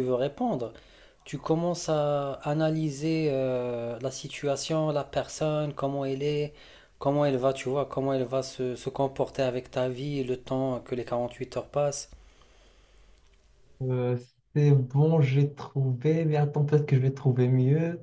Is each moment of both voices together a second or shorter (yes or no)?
yes